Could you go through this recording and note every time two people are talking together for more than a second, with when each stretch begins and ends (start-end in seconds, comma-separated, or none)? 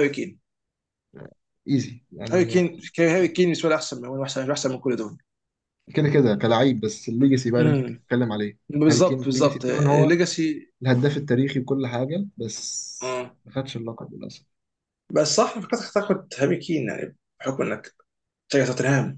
8.7-10.1